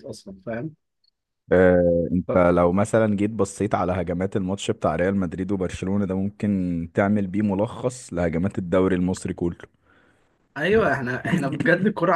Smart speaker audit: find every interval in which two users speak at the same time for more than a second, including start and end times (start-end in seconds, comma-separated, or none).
none